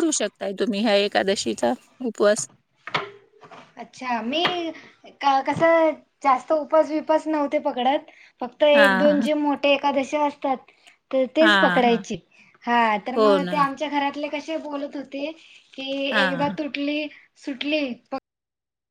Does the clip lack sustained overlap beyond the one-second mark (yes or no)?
yes